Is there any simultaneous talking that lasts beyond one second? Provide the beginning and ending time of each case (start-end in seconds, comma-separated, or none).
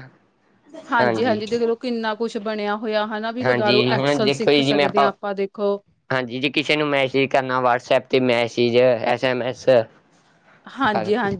3.4-4.8